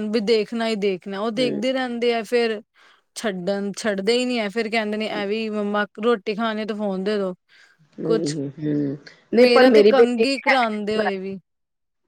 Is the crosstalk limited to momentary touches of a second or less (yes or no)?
no